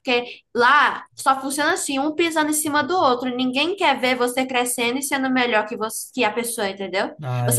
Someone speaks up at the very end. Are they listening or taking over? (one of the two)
listening